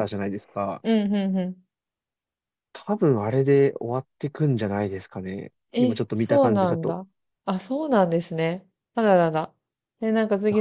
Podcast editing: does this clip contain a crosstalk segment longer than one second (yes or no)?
yes